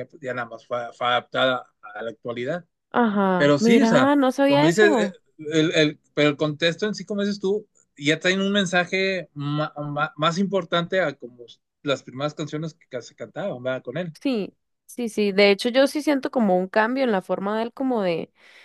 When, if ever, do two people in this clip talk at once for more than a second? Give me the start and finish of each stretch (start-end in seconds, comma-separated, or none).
3.4-5.1